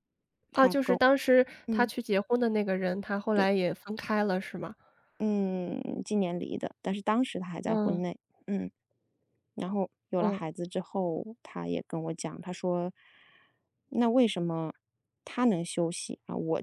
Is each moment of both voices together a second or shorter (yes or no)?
yes